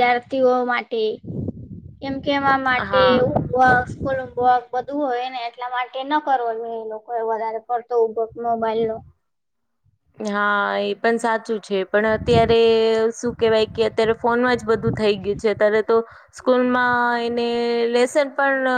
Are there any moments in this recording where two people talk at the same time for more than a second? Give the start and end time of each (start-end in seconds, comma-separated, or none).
none